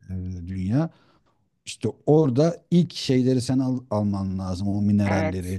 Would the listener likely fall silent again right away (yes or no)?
yes